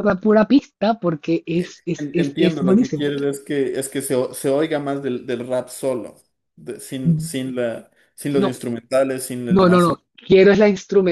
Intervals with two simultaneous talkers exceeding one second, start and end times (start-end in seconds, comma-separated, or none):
1.5-3.1